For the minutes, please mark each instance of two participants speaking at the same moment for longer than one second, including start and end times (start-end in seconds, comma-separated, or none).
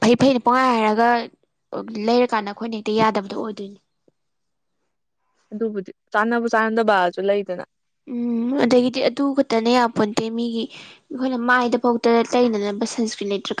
none